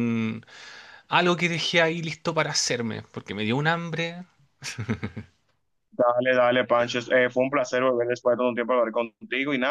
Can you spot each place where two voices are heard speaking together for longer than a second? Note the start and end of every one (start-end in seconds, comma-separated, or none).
none